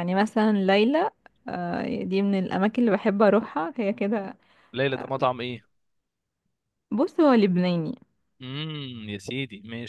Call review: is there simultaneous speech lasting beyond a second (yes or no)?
no